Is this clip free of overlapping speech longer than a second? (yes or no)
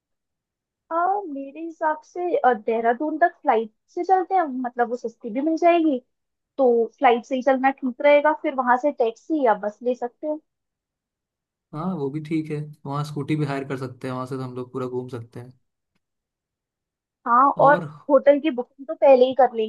yes